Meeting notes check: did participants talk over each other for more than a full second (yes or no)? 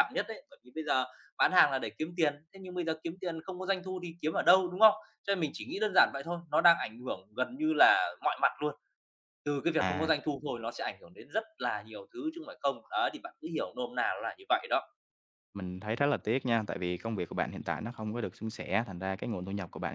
no